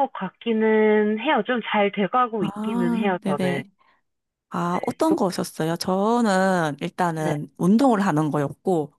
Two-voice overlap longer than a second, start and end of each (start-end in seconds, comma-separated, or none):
2.4-3.6